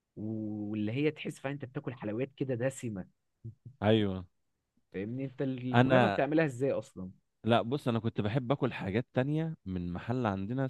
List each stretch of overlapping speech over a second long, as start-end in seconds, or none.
none